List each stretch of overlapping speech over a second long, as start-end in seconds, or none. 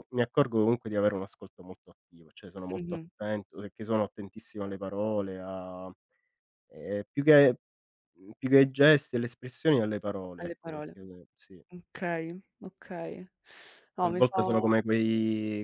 none